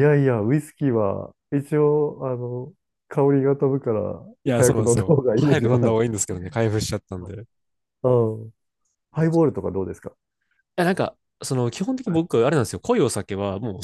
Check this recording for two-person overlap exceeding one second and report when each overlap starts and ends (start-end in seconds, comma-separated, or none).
4.4-6.0